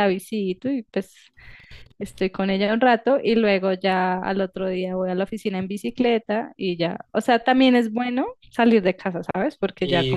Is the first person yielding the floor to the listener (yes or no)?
yes